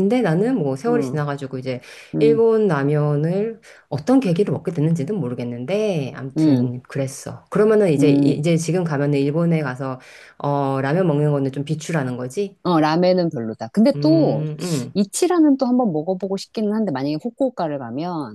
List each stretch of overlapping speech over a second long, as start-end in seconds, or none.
none